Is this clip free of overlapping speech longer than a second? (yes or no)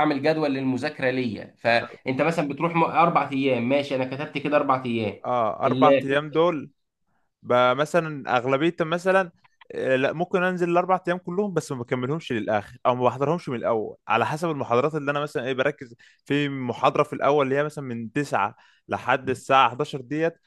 yes